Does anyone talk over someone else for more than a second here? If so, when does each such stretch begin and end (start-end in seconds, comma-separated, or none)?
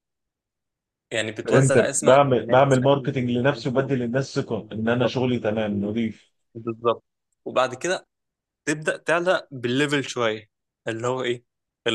1.4-3.2